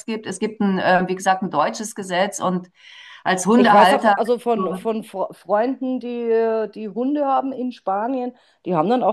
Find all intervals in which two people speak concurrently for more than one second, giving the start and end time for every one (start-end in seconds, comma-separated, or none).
3.5-4.9